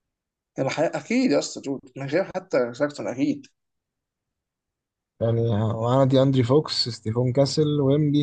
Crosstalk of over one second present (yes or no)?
no